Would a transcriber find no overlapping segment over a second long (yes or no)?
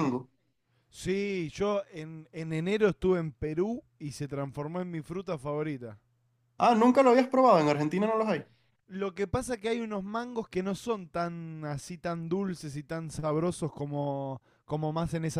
yes